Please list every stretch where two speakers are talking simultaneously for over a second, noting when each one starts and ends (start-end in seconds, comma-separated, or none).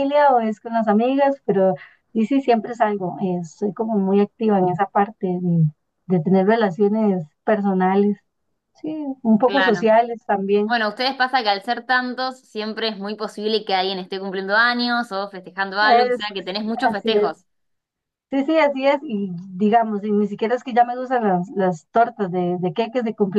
15.8-17.3